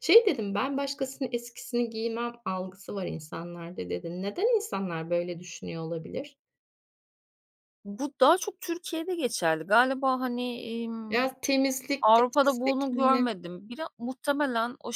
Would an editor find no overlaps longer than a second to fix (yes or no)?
no